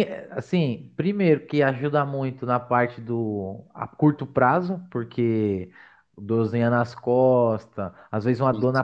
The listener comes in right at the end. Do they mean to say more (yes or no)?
no